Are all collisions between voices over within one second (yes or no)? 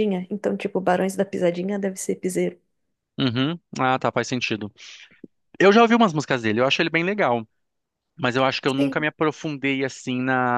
yes